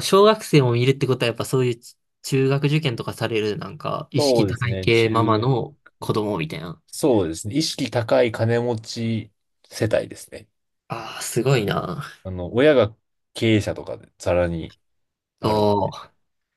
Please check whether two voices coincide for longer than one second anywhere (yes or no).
yes